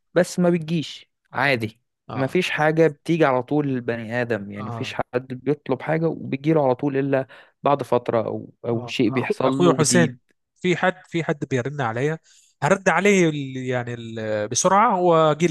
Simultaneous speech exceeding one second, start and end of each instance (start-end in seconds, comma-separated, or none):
8.7-10.2